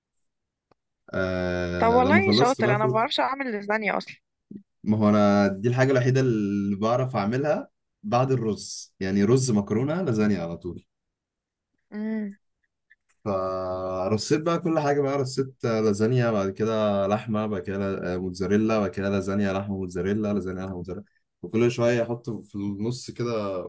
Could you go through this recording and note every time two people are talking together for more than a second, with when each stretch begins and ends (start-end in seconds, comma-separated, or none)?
1.8-3.0